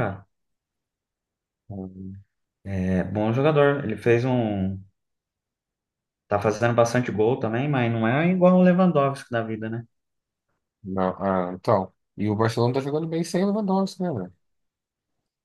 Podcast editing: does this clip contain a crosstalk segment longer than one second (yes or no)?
no